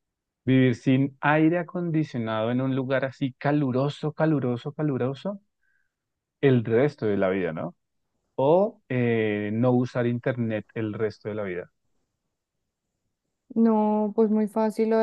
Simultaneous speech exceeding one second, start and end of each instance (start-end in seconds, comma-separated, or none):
none